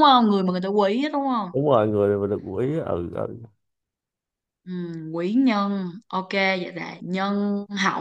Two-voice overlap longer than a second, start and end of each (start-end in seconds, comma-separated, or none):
none